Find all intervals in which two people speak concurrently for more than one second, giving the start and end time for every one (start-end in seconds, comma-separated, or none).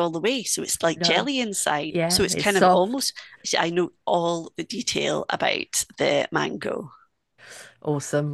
1.9-3.1